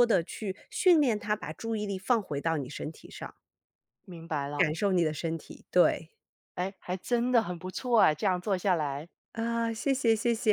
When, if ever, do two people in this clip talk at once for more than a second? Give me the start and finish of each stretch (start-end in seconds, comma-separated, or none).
none